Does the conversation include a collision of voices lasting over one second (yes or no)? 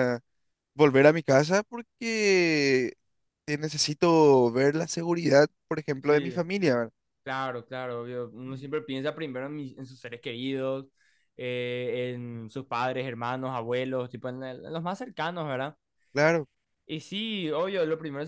no